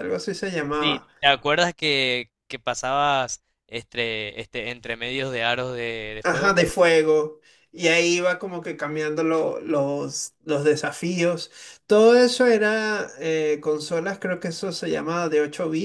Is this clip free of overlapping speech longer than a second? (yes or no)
yes